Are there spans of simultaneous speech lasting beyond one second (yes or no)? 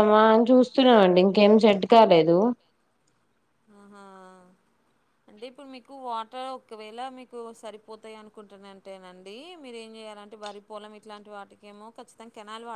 no